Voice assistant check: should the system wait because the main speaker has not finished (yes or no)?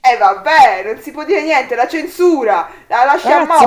no